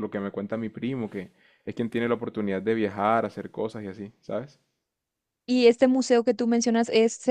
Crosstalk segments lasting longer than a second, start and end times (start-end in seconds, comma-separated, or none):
none